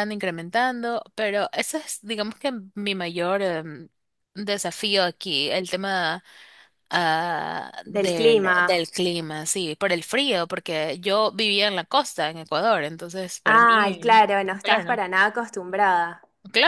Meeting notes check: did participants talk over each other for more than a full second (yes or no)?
yes